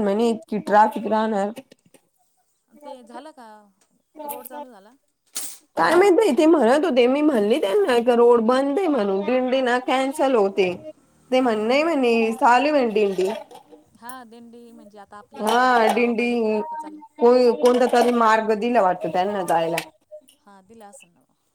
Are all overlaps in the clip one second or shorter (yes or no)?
yes